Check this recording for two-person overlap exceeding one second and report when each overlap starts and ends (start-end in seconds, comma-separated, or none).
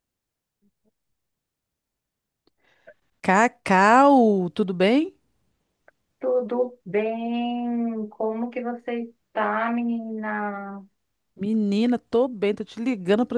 none